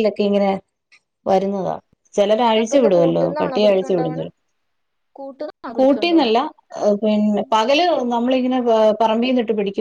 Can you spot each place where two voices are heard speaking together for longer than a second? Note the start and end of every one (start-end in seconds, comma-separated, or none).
2.6-4.2